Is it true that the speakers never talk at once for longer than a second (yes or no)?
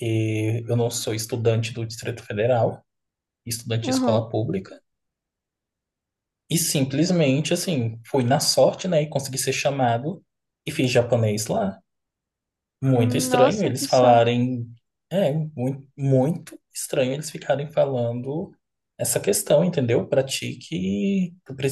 no